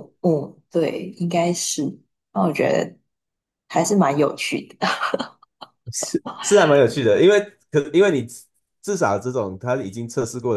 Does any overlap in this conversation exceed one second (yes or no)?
no